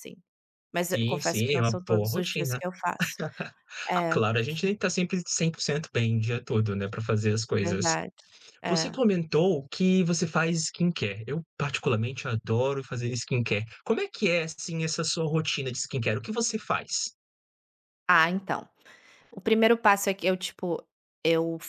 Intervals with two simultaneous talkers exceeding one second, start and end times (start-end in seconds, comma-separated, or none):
0.9-2.6